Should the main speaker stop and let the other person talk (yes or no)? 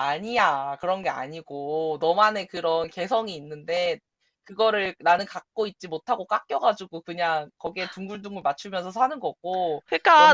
yes